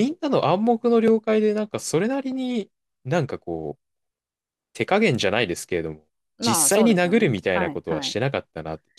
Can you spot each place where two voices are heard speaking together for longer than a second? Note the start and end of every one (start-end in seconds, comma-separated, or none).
6.4-8.2